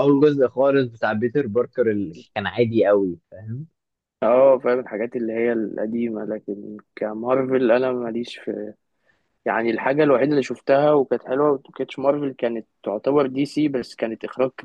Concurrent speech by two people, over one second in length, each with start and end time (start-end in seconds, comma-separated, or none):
none